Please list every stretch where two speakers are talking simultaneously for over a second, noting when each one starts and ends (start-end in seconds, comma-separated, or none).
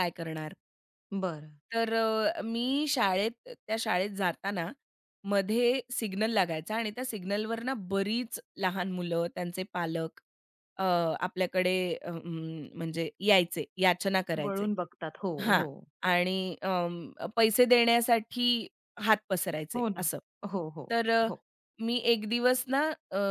none